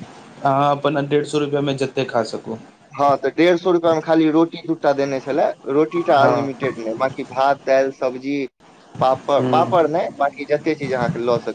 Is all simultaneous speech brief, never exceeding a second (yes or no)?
yes